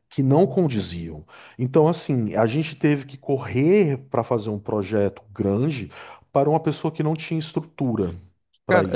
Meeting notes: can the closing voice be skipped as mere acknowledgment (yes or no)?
no